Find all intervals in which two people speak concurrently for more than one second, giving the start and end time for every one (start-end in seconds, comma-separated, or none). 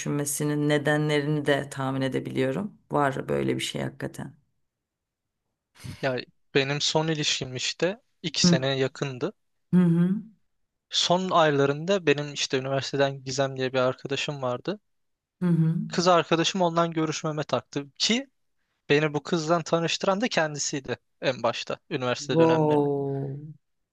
none